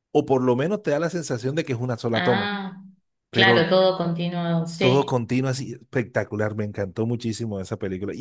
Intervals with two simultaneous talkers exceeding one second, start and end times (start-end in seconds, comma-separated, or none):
none